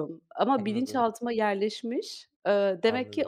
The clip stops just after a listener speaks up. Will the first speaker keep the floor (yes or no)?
yes